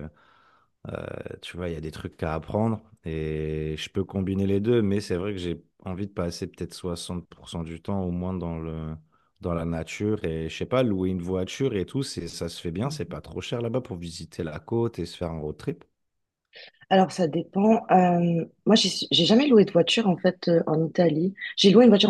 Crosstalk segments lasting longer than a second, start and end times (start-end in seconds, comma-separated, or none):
none